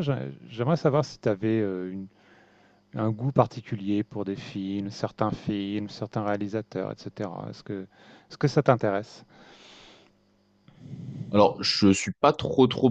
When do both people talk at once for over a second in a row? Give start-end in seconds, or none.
none